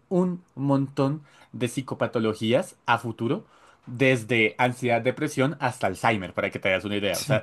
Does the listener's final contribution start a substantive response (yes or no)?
yes